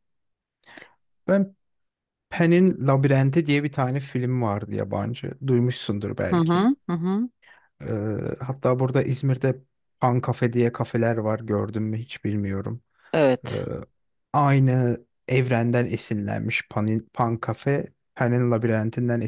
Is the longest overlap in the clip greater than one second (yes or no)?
no